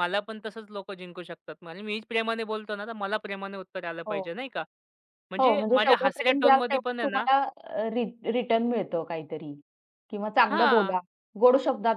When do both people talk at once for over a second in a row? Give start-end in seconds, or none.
5.4-7.3